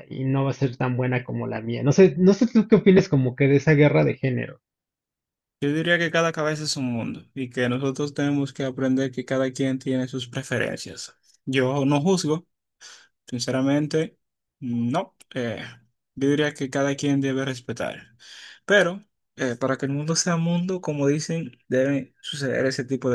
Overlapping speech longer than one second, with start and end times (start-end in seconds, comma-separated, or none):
none